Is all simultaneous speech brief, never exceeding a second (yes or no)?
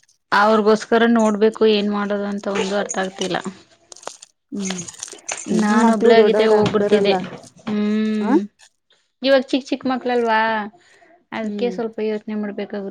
no